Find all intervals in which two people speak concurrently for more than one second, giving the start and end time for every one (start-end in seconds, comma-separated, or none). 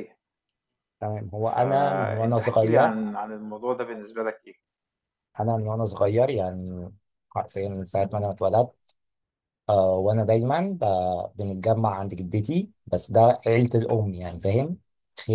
1.5-2.9